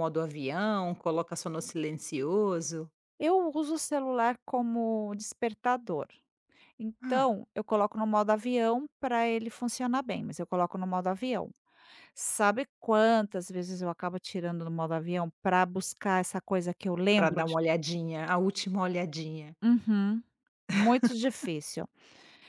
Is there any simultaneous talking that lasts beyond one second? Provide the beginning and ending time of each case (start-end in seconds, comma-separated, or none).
none